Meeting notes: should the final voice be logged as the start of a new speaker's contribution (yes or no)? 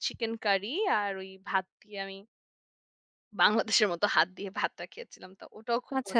yes